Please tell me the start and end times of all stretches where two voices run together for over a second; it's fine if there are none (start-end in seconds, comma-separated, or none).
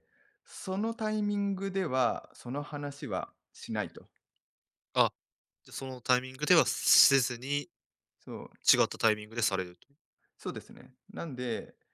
none